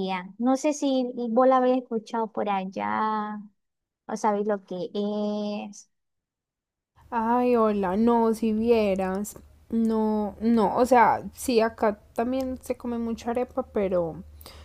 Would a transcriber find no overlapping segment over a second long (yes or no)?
yes